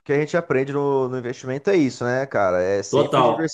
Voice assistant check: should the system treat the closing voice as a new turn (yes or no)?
no